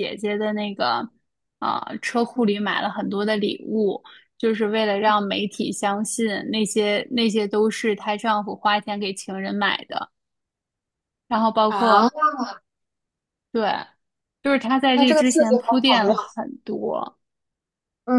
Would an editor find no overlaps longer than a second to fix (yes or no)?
no